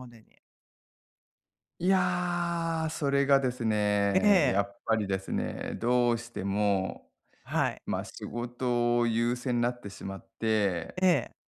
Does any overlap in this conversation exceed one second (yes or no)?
no